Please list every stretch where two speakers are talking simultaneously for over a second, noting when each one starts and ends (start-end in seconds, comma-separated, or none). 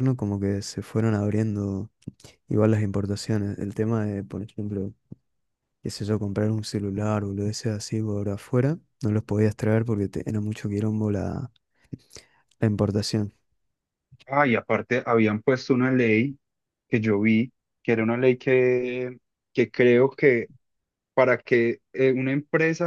none